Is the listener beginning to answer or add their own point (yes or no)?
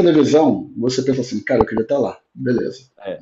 no